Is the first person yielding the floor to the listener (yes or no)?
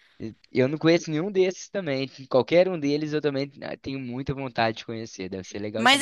yes